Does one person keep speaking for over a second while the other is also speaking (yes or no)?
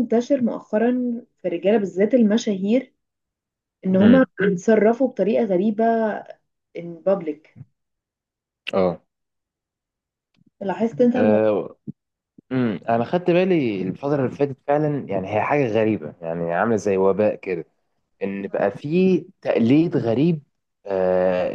no